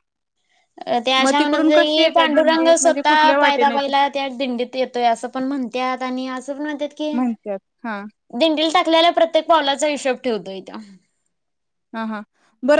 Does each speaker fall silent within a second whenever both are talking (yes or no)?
no